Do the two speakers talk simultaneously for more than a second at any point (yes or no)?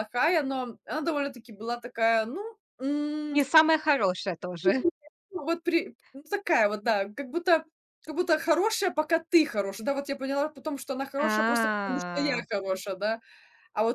yes